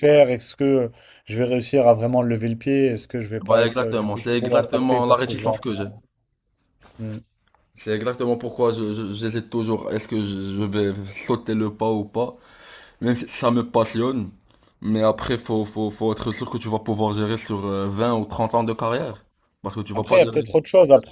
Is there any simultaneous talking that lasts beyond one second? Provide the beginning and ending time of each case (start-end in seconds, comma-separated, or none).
3.5-5.9